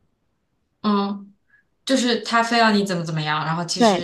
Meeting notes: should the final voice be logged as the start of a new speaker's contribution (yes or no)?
yes